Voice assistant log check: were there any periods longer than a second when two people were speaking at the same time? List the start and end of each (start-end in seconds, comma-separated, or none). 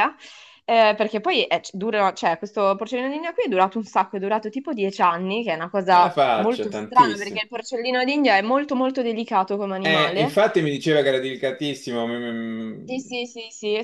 5.9-7.4